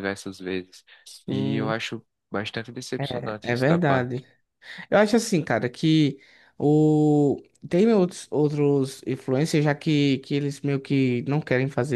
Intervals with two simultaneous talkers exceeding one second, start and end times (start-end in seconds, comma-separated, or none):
3.0-4.2